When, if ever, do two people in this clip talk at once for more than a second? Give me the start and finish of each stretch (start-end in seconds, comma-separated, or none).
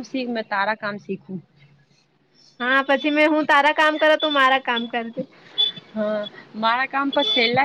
none